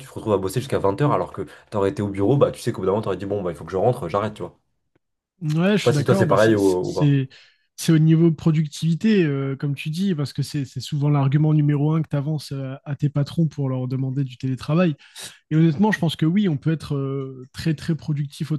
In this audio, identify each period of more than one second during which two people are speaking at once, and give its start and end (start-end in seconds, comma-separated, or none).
5.7-7.2